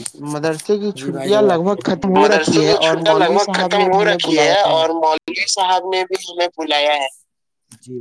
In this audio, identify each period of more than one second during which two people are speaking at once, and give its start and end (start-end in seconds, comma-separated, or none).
1.0-4.5